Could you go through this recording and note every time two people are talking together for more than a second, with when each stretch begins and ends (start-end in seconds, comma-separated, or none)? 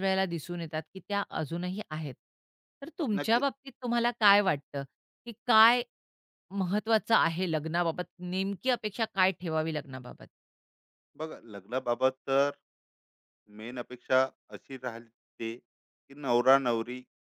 none